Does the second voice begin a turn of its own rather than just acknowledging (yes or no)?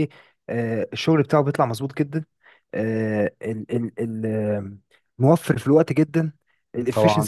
no